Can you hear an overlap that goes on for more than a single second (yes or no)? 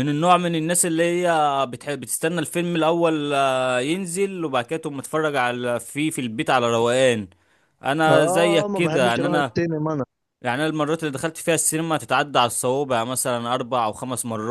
yes